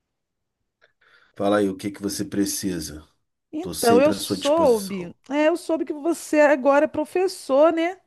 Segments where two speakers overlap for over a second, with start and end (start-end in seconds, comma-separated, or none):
3.6-5.1